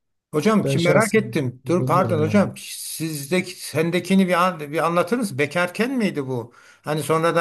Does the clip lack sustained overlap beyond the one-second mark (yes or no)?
no